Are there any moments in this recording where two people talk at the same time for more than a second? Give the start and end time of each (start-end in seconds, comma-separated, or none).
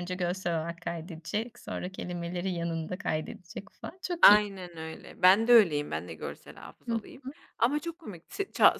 none